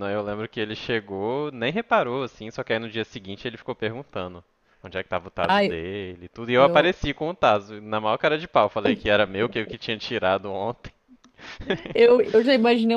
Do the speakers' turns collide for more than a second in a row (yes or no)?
no